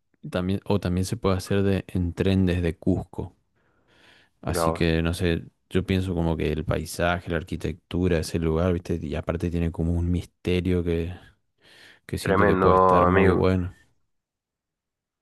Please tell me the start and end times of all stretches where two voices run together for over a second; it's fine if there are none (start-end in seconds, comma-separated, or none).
12.2-13.4